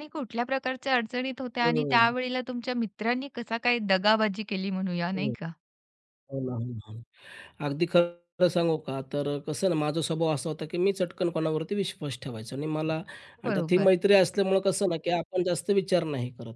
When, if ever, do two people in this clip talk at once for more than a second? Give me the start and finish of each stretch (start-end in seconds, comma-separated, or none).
none